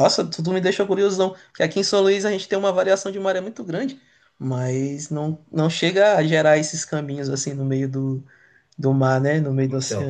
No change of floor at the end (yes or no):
no